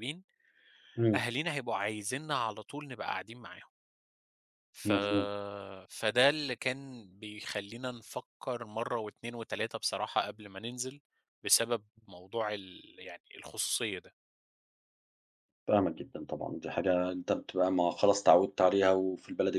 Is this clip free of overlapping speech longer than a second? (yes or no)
yes